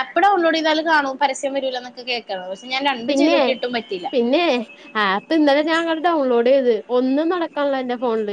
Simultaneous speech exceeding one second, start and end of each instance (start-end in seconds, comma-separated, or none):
none